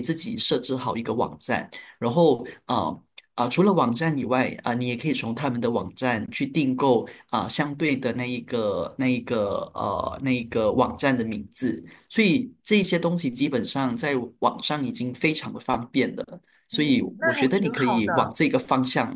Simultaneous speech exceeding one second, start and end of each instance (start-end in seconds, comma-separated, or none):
16.7-18.4